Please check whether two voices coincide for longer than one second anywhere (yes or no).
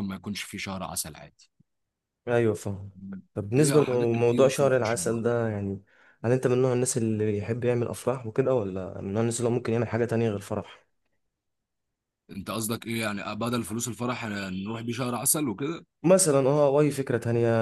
yes